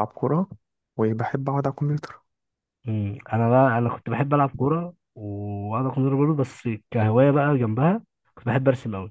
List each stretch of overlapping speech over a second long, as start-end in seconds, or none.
none